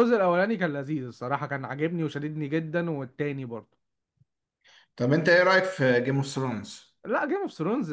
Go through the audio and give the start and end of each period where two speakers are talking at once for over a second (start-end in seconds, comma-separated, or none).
none